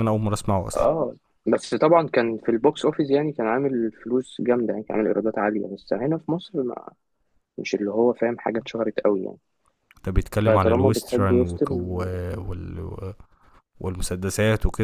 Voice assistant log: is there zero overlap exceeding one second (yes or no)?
no